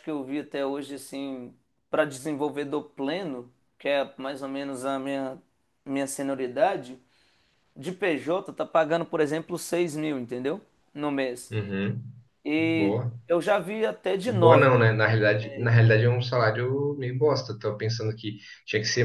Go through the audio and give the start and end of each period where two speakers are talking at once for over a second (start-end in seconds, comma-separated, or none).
14.2-15.7